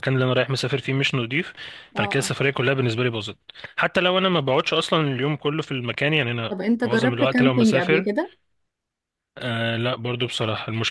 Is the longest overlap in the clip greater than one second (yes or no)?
yes